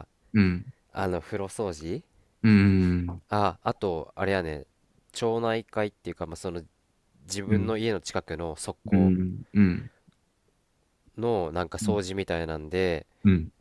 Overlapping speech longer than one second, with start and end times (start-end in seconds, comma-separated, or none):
none